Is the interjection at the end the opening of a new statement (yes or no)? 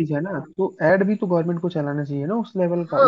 yes